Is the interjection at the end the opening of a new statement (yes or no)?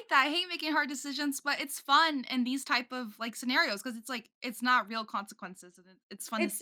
yes